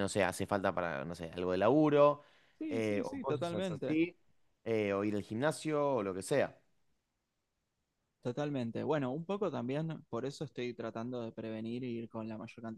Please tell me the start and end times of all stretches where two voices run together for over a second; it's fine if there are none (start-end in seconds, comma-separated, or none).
2.7-4.0